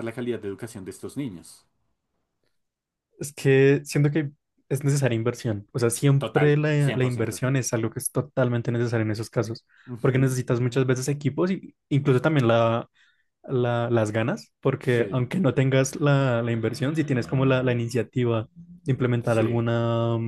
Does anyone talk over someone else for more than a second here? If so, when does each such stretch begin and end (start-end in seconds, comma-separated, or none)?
6.2-7.4